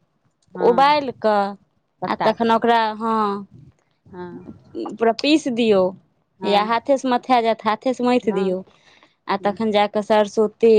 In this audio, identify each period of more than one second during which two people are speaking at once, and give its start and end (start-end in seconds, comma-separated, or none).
none